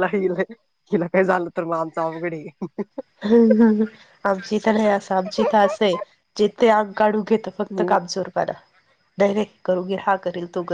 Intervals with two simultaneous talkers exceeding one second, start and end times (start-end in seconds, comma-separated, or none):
none